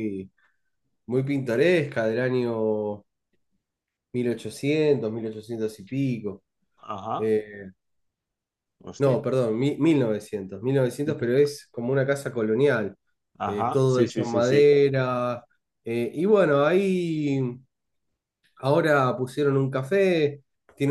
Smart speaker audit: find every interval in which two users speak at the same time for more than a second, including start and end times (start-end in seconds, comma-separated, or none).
13.4-14.7